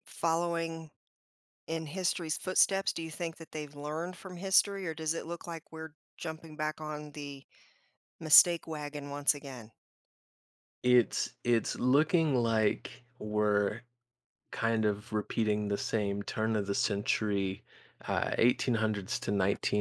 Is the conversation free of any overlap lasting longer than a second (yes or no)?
yes